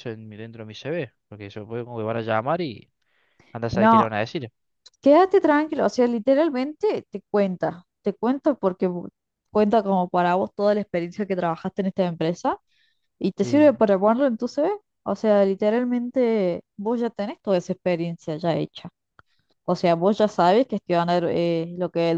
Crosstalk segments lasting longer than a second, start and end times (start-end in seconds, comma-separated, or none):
none